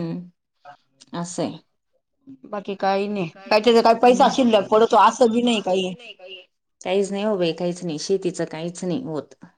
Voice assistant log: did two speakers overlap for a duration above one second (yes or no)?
no